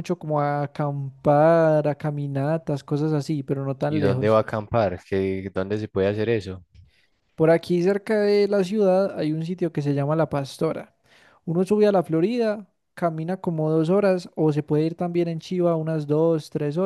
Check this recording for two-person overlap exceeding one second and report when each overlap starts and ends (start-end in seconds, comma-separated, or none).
none